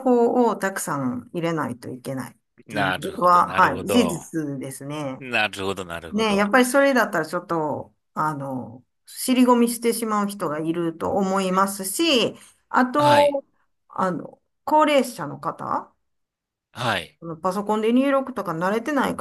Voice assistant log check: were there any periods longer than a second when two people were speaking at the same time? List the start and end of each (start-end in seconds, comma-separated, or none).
2.7-4.2